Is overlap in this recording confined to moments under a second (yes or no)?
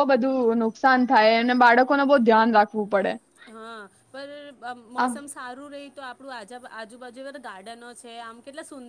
yes